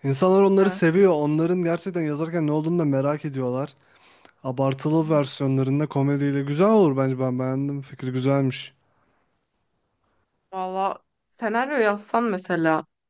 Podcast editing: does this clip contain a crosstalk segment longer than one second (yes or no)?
no